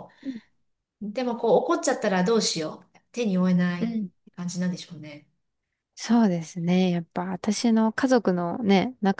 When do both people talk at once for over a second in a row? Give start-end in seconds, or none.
none